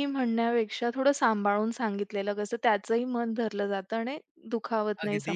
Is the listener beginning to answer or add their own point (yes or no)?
yes